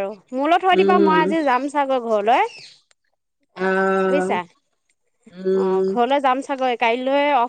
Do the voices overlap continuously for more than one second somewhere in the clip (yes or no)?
no